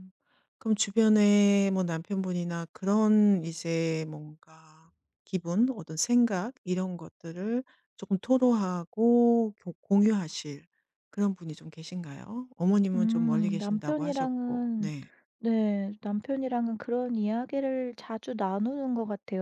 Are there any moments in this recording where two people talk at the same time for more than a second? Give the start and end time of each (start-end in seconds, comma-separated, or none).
12.9-14.9